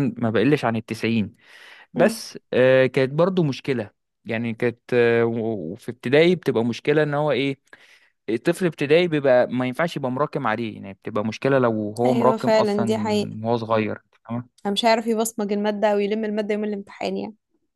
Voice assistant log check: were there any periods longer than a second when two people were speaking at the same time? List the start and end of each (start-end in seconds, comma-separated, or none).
12.0-13.4